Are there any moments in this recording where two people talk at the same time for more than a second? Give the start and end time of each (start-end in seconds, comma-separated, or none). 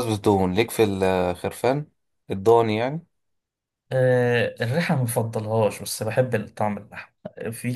none